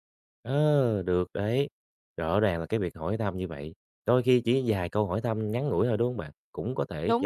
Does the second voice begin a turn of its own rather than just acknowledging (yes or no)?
no